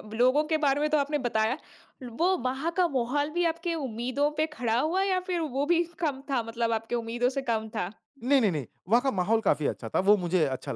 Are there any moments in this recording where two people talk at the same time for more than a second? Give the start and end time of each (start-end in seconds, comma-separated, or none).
none